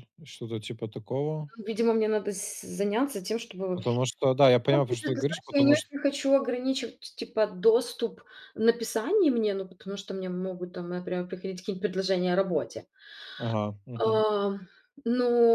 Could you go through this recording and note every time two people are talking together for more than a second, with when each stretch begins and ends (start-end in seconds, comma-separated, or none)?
4.7-5.9